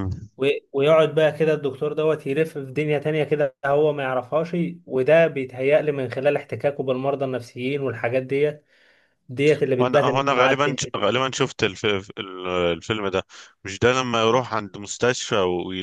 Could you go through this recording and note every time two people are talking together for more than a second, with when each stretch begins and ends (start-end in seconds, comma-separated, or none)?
9.8-11.1